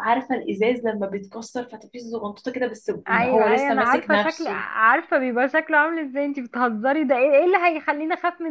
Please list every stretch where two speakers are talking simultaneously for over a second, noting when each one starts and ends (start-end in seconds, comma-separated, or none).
3.1-4.6